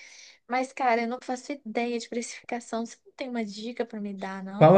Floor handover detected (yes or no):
yes